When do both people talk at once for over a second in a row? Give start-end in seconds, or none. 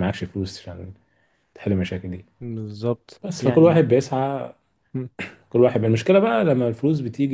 none